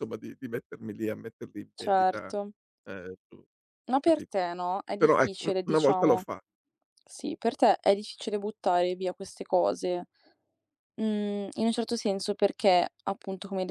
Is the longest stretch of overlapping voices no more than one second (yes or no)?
no